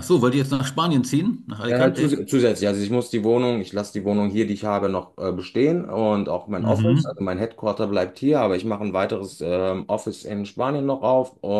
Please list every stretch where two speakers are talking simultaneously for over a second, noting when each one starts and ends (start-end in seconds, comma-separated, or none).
none